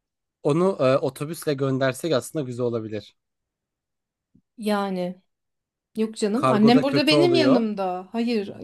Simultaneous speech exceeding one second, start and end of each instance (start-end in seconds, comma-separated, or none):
6.3-7.6